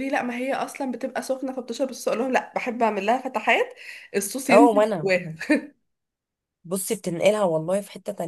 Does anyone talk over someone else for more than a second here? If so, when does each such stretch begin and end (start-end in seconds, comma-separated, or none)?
none